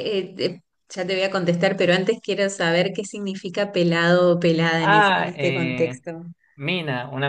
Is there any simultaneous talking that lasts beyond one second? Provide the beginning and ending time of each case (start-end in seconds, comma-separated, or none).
4.8-6.0